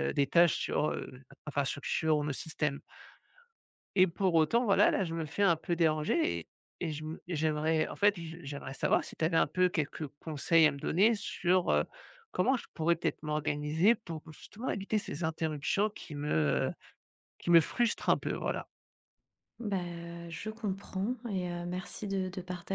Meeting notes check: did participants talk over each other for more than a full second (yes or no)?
no